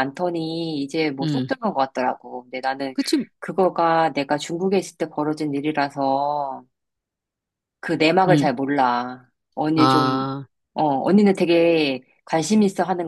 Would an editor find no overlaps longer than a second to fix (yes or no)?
yes